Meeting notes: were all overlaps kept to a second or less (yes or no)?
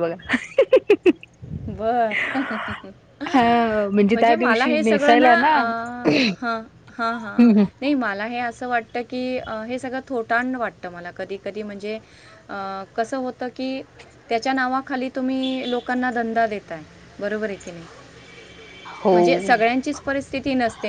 no